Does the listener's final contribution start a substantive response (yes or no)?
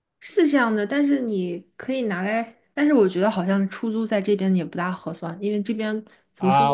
yes